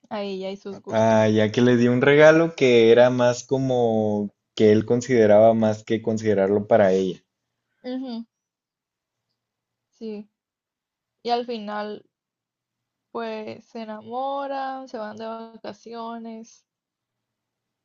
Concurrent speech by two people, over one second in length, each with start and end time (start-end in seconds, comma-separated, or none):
none